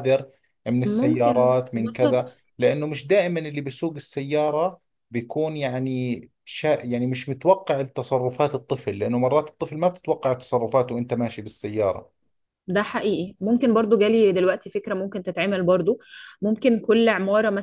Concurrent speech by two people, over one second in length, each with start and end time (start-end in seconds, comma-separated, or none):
0.8-2.4